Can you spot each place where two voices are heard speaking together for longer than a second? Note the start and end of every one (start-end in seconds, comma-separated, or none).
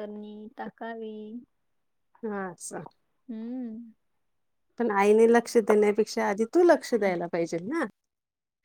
none